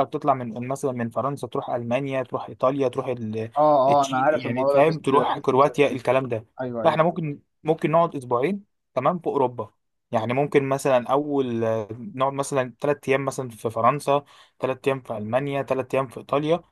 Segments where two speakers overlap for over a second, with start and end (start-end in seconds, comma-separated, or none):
4.0-5.7